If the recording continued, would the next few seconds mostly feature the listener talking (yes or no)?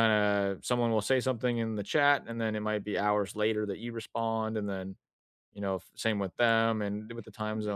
yes